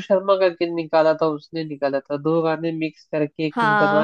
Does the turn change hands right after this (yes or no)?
yes